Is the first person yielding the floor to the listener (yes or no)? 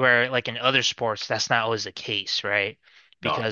no